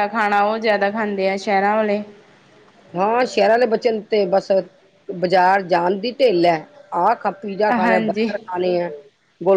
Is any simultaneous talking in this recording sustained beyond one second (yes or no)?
no